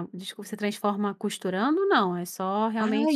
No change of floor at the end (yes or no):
no